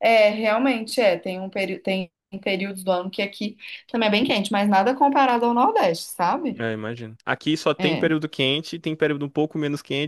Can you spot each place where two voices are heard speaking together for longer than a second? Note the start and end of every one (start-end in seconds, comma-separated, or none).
none